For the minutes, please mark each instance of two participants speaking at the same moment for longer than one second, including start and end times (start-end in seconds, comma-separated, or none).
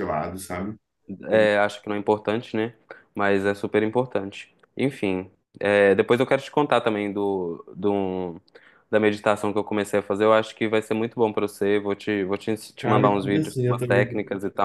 12.8-14.1